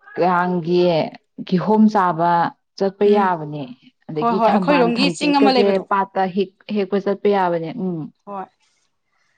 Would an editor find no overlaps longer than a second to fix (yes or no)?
no